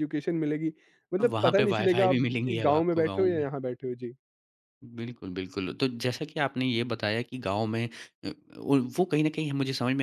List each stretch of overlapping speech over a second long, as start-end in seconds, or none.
1.2-3.5